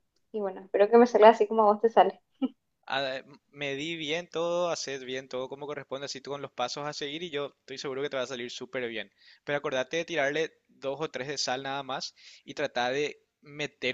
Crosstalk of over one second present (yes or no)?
no